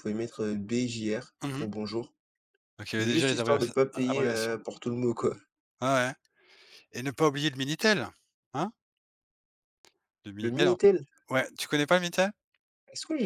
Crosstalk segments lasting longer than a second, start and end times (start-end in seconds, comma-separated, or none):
3.0-4.5